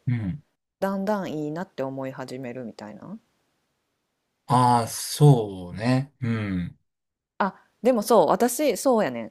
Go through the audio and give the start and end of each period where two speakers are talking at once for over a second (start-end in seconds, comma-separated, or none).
none